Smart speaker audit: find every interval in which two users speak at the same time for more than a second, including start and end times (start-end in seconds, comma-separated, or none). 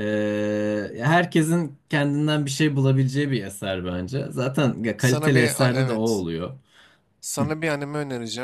5.0-6.2